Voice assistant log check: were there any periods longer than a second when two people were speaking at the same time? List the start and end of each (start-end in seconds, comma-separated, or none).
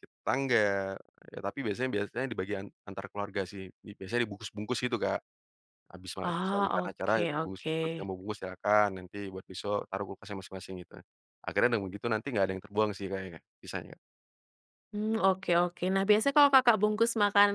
6.3-7.8